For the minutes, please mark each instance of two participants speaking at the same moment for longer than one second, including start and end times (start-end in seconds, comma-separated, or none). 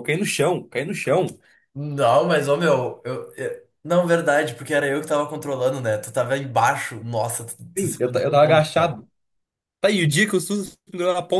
7.8-9.0